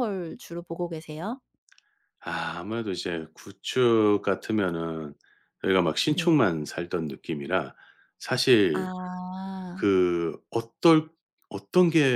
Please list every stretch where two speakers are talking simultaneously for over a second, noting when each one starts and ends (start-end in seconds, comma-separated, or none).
none